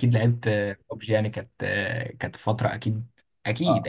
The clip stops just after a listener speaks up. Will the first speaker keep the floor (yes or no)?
no